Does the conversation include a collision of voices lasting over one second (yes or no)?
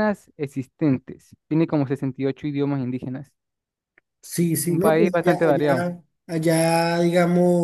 yes